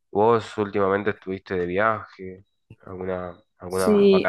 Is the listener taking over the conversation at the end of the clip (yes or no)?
yes